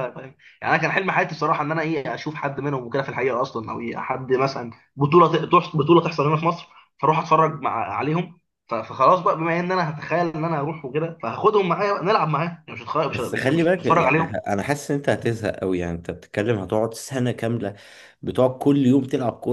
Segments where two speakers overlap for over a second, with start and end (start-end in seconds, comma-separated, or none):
13.1-14.4